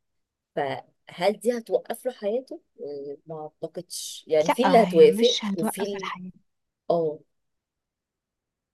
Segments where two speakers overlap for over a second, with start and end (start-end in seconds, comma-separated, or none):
4.6-6.1